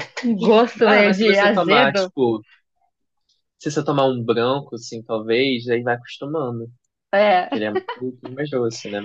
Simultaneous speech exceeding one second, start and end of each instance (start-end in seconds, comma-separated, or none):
0.8-2.1